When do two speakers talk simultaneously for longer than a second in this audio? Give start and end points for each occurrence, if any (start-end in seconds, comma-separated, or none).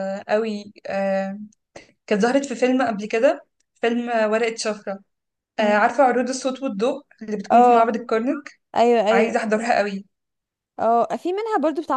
none